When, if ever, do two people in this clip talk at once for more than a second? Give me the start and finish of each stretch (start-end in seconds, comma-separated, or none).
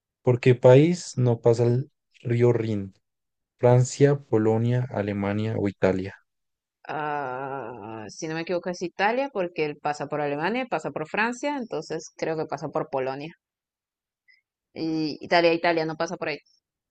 none